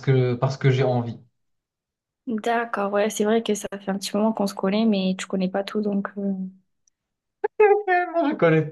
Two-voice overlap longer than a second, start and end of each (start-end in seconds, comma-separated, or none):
none